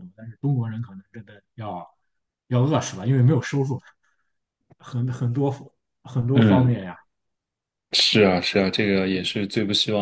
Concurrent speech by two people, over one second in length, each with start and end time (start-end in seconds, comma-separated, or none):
none